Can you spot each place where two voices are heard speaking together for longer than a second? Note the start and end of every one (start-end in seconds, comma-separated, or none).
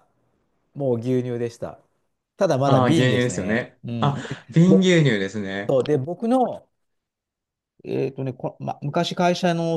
2.6-4.9